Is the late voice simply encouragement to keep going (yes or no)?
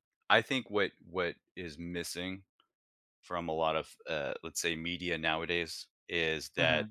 yes